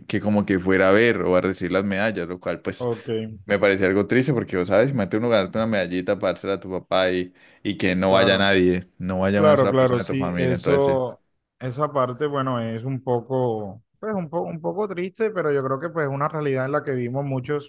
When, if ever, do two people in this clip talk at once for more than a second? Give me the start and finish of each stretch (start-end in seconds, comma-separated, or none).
9.3-11.0